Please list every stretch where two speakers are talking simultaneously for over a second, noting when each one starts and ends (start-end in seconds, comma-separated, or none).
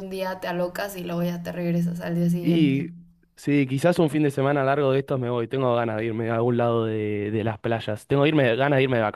none